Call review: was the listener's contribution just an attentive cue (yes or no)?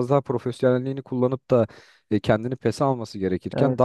yes